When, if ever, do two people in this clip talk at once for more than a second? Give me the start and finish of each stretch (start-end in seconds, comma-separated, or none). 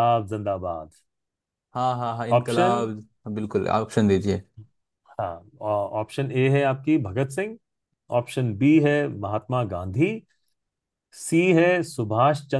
none